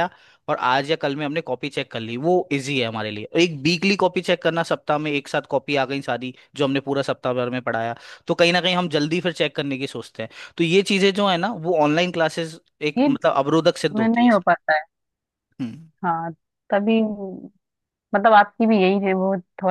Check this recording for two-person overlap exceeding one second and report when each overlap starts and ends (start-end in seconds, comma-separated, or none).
none